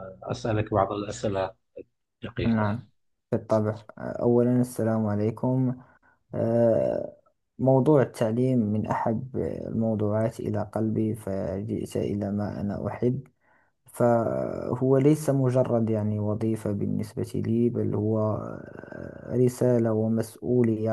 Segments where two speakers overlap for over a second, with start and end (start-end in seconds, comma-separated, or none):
none